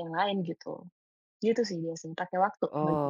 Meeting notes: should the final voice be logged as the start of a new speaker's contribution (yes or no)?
yes